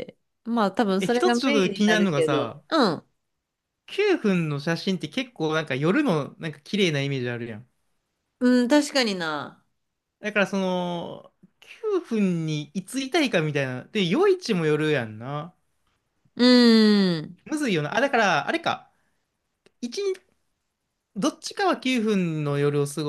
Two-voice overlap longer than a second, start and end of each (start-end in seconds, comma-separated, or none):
1.0-2.6